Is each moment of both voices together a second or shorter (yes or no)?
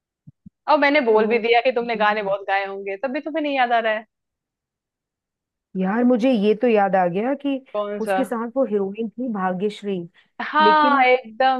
yes